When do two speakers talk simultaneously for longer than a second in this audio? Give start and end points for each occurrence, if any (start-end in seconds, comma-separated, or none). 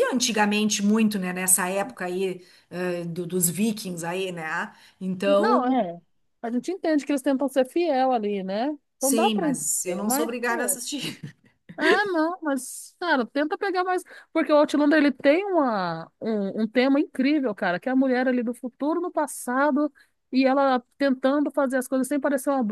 9.0-10.8